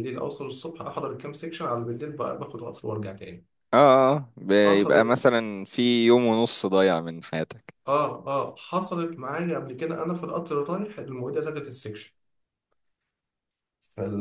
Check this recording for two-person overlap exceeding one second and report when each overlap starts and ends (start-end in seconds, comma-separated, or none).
none